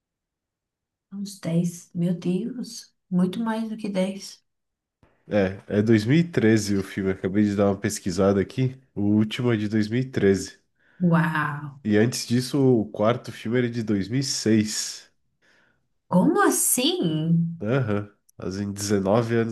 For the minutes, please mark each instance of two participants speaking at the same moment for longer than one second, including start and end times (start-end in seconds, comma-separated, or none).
none